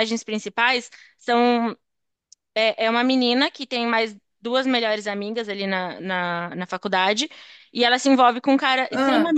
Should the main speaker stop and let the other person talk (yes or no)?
no